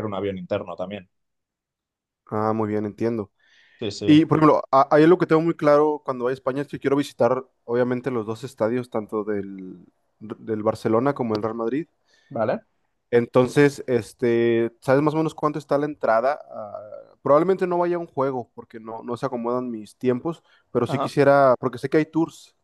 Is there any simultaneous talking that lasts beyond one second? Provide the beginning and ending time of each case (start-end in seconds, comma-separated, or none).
none